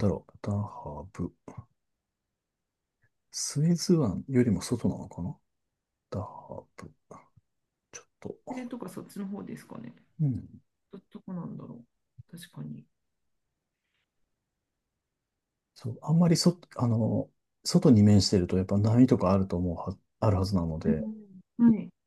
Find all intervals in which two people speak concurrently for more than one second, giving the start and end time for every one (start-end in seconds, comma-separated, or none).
none